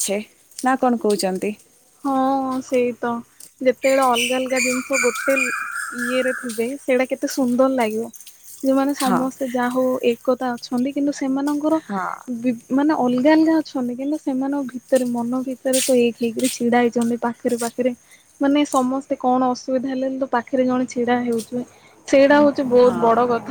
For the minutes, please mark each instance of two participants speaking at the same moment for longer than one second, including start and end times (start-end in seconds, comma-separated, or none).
none